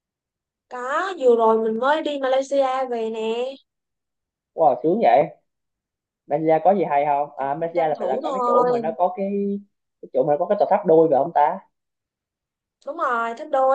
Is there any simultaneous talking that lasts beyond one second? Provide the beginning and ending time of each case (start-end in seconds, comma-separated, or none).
7.4-8.8